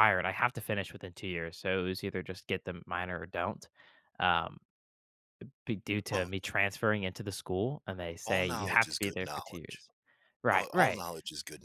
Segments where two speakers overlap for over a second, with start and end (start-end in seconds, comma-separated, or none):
8.2-9.8